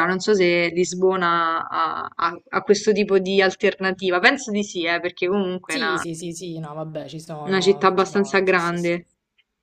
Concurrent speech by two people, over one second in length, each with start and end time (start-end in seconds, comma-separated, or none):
7.4-9.1